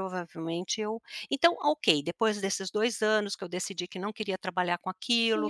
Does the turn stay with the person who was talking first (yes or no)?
no